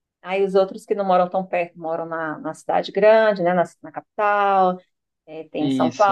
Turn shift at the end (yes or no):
no